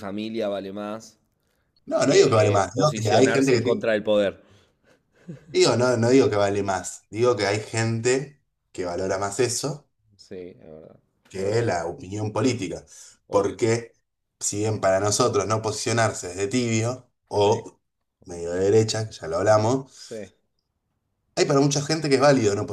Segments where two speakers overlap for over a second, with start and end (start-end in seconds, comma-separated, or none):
2.1-3.9